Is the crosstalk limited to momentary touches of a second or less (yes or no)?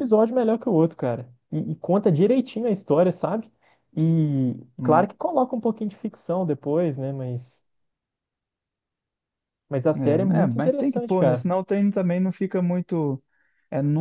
no